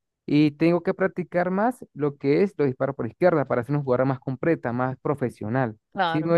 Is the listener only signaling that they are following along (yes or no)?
no